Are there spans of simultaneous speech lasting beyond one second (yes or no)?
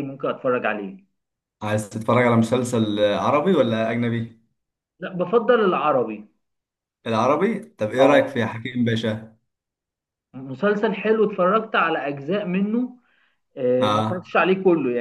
no